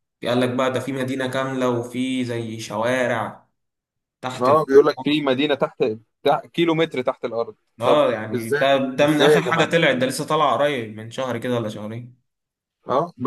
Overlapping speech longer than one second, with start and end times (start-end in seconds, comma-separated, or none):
7.8-9.8